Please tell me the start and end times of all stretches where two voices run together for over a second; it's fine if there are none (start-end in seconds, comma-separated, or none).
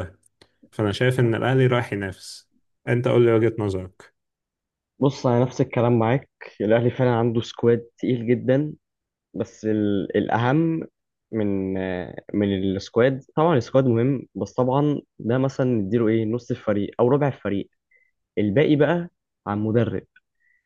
none